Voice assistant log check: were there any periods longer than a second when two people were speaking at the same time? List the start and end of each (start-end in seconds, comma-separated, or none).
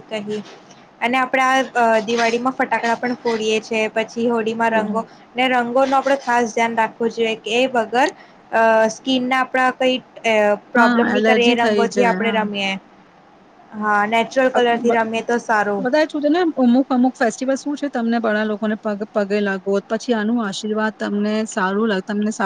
10.8-12.4